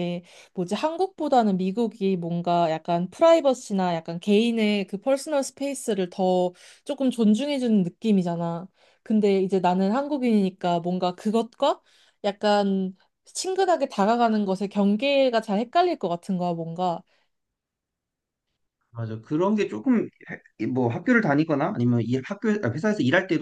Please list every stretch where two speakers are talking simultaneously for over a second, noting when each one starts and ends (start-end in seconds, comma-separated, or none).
none